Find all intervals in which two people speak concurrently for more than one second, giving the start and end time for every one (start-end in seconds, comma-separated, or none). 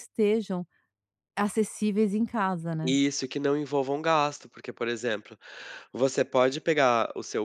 none